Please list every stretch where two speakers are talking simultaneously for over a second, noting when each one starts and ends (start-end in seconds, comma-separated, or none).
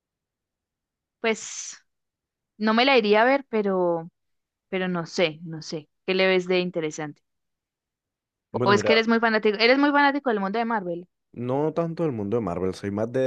none